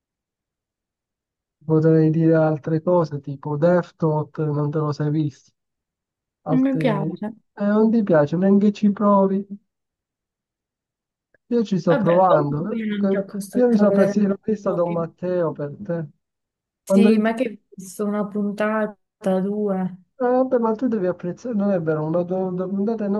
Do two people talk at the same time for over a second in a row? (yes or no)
yes